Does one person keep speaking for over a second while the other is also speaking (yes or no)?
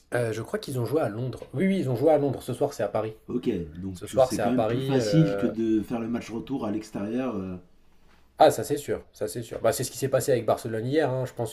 yes